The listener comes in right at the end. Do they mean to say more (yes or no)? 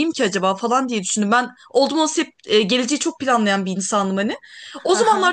no